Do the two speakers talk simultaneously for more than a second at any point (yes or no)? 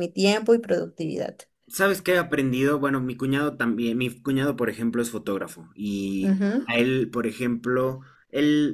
no